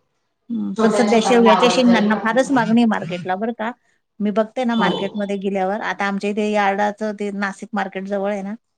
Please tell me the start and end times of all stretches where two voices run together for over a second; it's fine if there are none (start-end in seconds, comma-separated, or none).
0.8-2.7